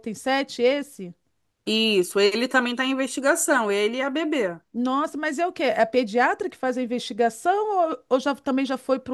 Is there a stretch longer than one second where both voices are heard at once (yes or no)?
no